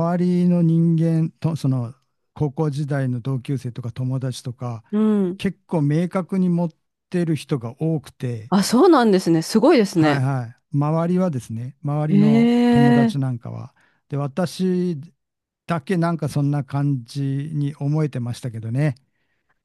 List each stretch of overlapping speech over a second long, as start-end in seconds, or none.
12.1-13.3